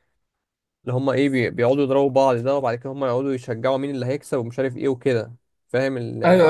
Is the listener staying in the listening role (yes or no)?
no